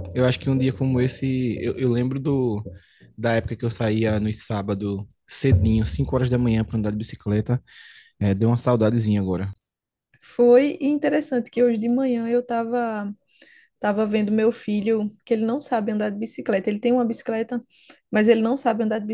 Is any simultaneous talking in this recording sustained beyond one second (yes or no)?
no